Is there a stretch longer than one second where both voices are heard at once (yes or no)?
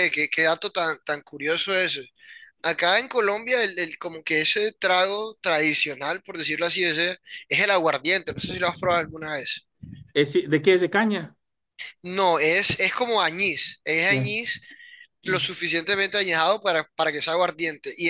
no